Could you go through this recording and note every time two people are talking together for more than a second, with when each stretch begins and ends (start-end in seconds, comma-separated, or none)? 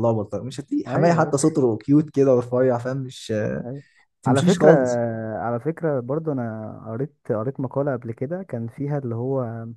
none